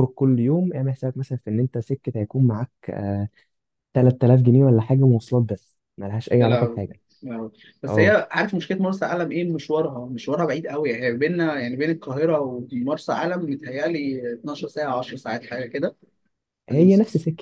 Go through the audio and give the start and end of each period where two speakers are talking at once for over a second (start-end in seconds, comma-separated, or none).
none